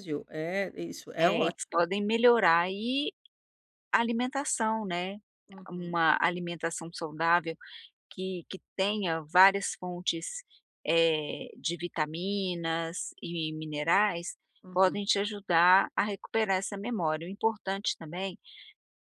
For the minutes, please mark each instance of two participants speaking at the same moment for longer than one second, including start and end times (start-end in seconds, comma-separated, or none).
none